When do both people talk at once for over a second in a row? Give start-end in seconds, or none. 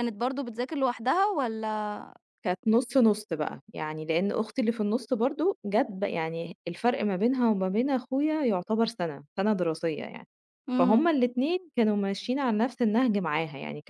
none